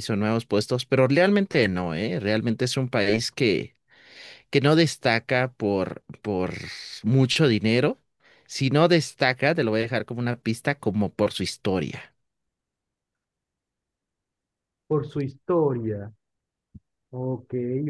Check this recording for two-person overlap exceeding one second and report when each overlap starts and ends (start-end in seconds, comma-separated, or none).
none